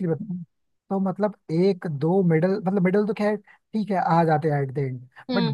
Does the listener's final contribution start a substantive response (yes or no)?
no